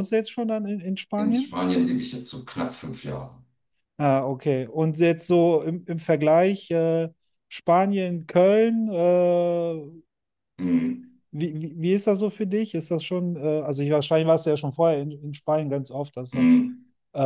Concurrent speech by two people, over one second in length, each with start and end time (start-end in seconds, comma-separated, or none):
none